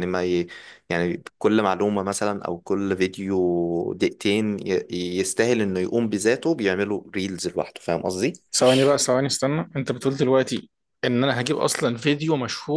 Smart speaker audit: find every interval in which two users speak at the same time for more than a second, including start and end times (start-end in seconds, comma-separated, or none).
none